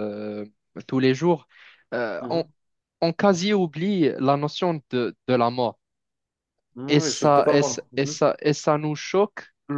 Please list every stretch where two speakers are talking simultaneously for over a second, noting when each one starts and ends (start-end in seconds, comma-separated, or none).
6.9-8.2